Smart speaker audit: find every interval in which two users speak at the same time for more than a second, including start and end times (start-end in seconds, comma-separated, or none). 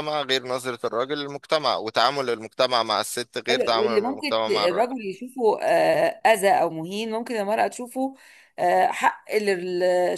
3.5-4.9